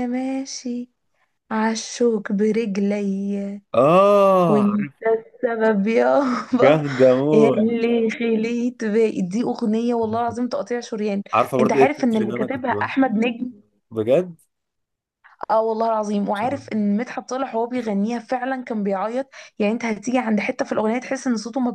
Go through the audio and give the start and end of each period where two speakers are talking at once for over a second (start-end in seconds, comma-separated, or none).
11.6-12.9